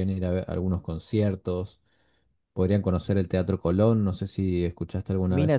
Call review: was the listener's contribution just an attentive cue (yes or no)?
no